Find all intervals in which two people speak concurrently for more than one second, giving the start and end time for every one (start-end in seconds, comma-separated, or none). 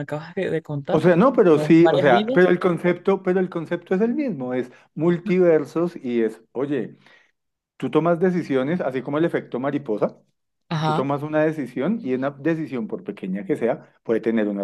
0.9-2.5